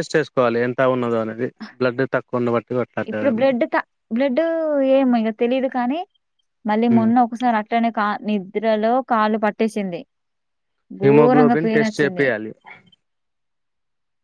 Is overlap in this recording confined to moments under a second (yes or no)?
no